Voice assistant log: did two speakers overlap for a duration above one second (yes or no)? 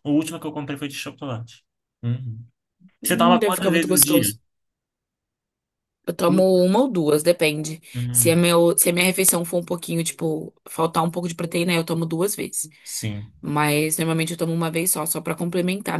yes